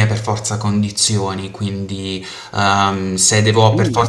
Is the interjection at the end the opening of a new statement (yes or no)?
no